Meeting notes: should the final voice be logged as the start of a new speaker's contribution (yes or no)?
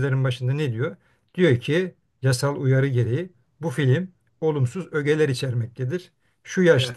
no